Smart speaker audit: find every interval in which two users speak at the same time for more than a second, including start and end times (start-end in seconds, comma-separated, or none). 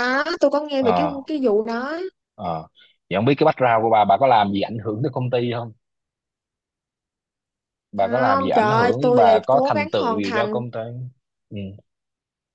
8.0-10.6